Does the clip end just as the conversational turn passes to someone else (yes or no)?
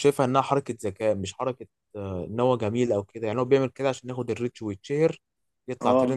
no